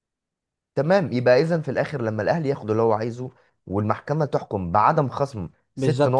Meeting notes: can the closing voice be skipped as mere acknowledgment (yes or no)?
no